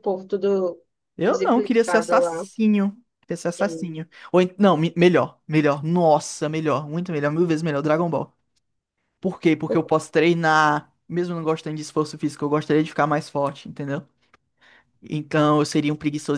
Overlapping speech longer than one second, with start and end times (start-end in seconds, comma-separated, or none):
1.3-2.5